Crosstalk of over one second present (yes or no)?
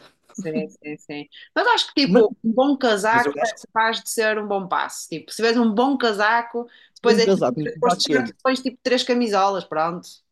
yes